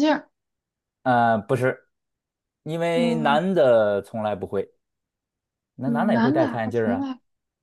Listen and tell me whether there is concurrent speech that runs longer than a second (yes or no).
yes